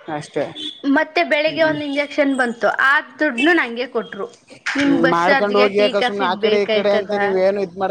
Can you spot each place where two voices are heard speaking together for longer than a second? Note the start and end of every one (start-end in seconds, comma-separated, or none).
5.2-7.1